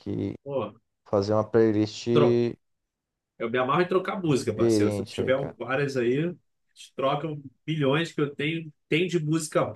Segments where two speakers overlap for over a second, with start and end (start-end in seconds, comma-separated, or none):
4.3-5.6